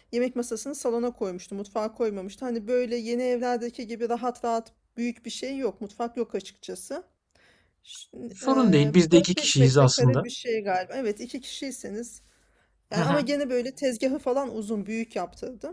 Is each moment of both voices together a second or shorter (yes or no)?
no